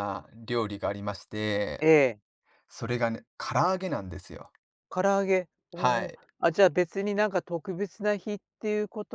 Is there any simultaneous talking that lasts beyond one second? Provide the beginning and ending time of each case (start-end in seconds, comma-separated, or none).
none